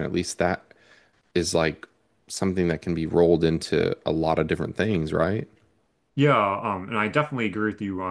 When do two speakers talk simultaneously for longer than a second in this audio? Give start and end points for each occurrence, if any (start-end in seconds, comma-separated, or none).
none